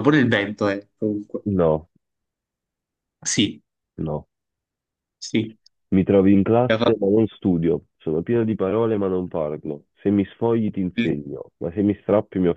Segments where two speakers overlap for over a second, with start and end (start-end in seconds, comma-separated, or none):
none